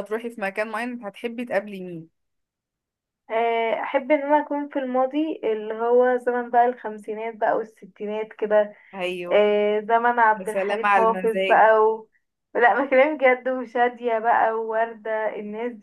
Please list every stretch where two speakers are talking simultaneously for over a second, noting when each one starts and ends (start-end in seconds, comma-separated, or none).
10.3-11.7